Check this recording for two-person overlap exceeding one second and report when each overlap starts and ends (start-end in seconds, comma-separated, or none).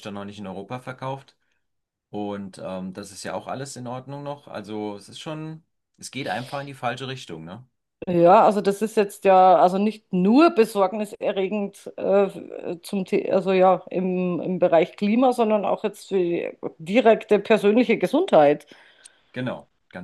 none